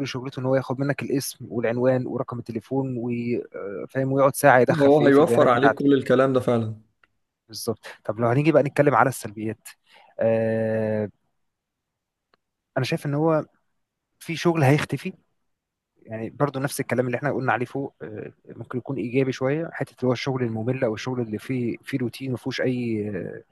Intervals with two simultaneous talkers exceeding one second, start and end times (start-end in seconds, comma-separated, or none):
4.7-6.0